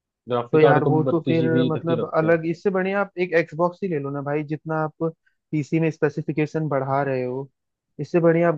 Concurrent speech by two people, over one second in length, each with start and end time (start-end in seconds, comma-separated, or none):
0.5-2.4